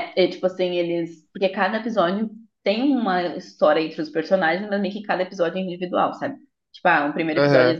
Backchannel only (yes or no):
yes